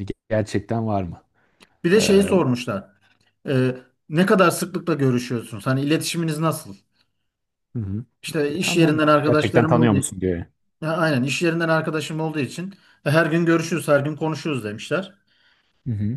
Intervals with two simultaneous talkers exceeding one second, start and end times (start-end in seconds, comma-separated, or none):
8.5-10.0